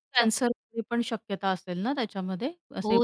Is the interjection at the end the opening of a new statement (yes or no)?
yes